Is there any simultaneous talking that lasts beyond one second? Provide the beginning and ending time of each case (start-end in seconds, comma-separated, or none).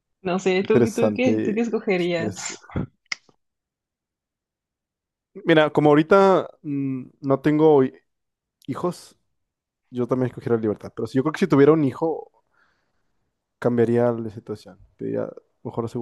0.6-2.5